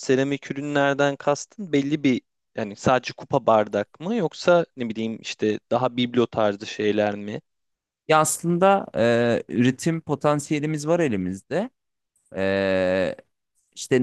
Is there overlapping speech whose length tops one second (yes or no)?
no